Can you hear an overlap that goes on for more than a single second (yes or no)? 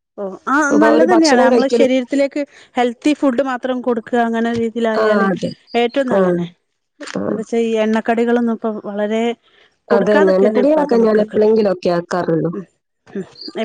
yes